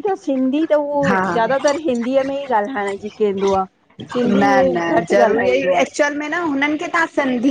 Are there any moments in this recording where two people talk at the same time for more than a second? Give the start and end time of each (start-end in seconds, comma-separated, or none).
none